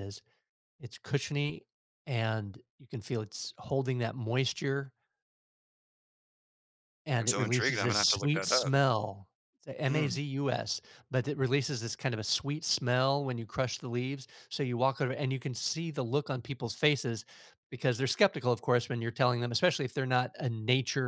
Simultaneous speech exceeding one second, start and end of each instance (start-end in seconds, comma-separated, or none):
7.2-8.7